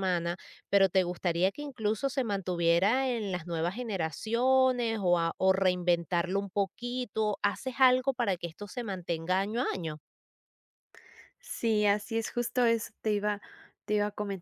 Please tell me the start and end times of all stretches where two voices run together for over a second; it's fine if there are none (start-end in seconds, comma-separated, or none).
none